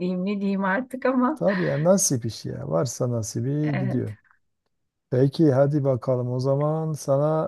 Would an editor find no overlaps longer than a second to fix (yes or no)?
yes